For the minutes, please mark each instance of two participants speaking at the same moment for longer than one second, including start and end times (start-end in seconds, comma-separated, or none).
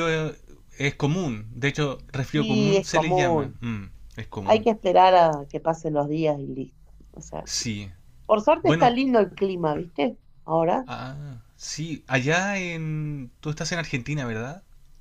2.3-3.6